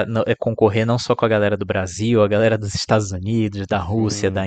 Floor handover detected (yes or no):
no